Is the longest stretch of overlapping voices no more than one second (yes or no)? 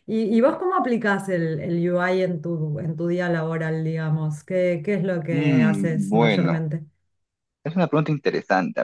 no